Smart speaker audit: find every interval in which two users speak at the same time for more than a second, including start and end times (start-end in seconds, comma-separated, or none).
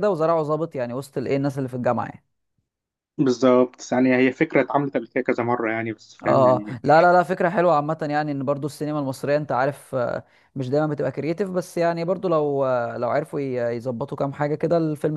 none